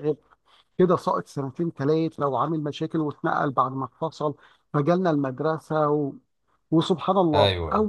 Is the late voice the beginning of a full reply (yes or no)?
no